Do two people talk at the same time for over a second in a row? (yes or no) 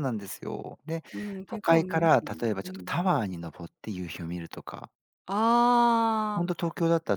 yes